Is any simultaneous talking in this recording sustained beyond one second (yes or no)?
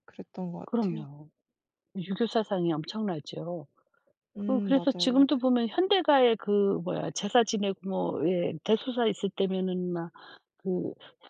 yes